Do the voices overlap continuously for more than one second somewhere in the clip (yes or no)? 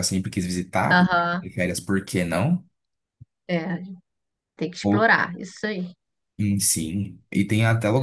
no